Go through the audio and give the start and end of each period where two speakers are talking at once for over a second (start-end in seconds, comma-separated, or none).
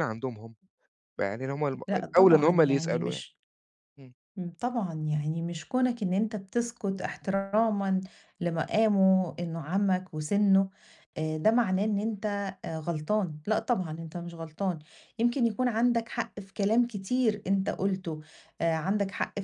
1.9-3.2